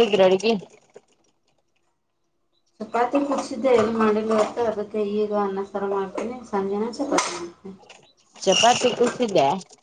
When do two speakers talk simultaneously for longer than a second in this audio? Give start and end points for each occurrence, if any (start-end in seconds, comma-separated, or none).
none